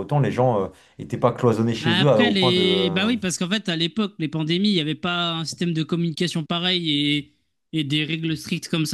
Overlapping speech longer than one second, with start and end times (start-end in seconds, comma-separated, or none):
1.8-3.1